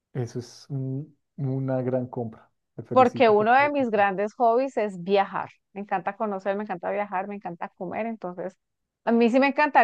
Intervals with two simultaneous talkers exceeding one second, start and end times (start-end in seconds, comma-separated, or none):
none